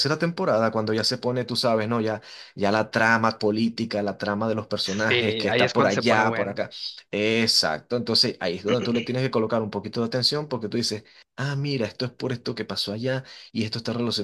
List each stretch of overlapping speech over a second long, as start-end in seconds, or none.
4.8-6.6